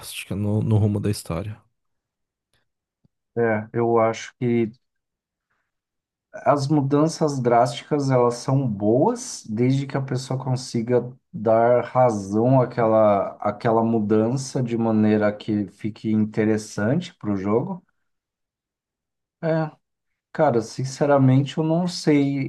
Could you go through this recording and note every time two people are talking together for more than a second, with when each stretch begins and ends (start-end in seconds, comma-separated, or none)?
none